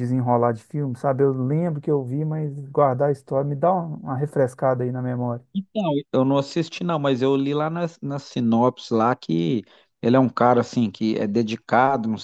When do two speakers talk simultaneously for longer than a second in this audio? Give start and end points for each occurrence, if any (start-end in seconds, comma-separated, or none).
none